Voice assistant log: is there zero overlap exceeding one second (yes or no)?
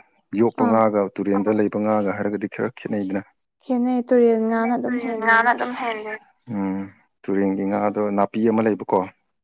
yes